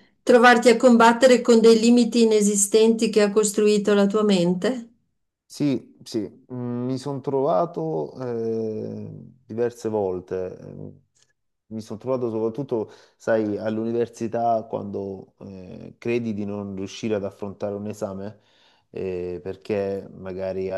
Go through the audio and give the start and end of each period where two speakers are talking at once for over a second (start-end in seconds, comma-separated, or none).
none